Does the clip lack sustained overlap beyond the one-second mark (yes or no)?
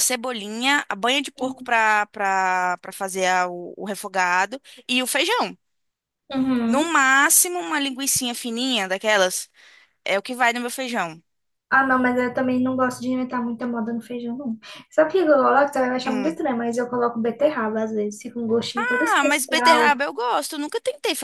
no